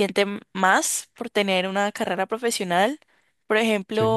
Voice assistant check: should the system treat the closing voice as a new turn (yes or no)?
no